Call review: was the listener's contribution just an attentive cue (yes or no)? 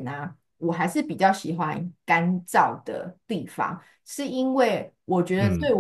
yes